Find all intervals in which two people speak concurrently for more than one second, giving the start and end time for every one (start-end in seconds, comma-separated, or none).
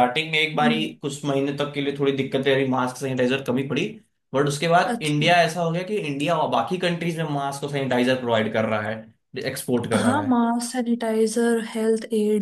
none